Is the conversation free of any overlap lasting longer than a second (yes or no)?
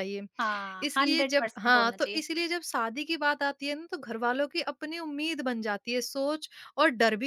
no